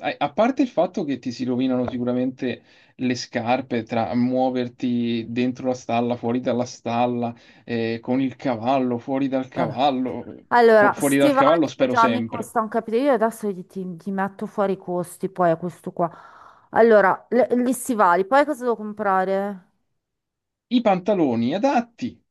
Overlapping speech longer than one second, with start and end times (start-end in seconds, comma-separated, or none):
10.5-12.5